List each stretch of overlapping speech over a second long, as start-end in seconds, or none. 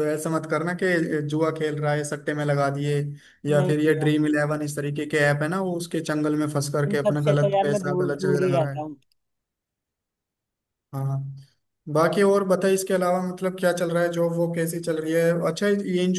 6.9-9.0